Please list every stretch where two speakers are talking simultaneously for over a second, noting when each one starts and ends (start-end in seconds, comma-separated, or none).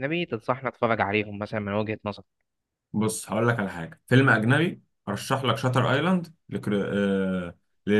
none